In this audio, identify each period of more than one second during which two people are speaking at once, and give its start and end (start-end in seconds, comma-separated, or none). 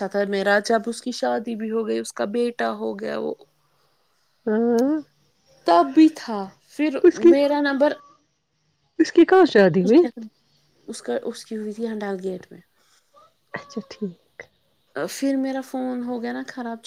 none